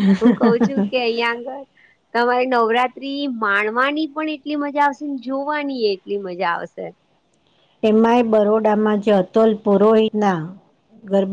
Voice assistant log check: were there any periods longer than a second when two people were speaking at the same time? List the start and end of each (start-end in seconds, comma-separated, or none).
none